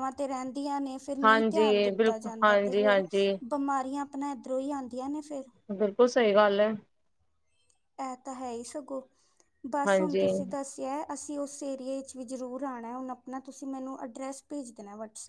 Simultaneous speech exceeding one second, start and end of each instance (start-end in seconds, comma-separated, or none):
1.2-3.0